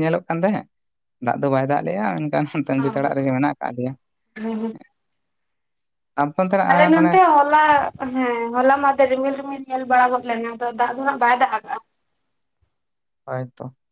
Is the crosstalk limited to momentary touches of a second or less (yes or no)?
yes